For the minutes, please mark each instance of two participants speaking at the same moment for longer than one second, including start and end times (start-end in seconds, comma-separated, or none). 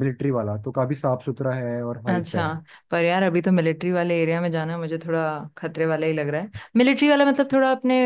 none